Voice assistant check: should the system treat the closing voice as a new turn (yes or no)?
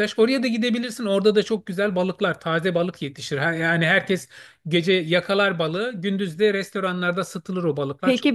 yes